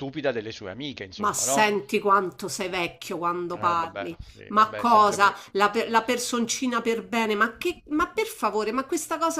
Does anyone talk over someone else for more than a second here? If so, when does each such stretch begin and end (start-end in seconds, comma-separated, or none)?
3.5-5.5